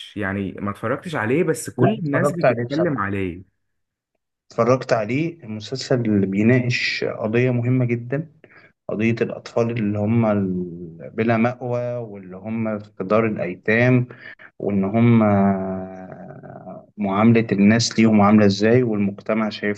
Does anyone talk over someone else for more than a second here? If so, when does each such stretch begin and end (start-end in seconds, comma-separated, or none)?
1.8-3.0